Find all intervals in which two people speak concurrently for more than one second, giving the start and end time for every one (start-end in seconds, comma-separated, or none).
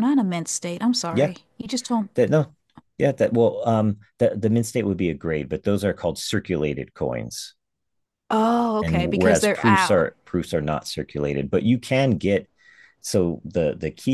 8.8-10.1